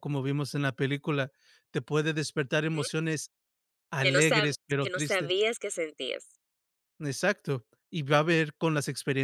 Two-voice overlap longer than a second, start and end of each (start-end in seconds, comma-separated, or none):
4.0-5.4